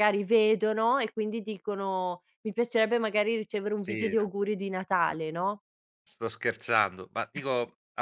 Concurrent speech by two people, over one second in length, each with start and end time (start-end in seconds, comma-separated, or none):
none